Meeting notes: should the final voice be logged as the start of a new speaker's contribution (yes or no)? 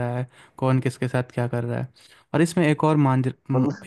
no